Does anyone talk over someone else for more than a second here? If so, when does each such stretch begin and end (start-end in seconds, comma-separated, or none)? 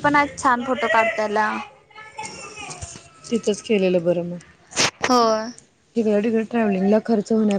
none